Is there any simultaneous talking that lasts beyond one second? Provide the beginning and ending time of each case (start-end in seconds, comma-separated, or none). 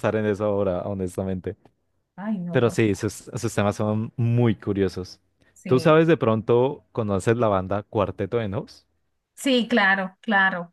none